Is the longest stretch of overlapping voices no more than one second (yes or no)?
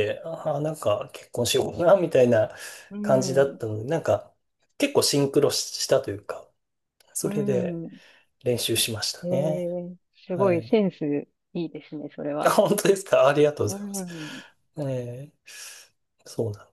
yes